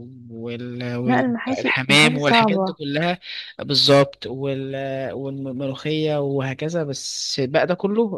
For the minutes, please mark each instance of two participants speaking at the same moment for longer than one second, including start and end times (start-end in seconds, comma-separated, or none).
1.0-2.7